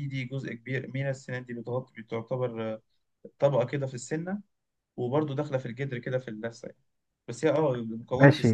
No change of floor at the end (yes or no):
no